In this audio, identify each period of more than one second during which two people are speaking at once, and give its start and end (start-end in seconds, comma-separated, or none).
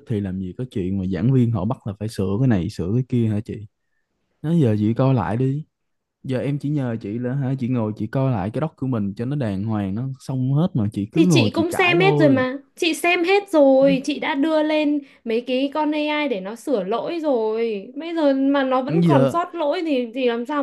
11.1-12.4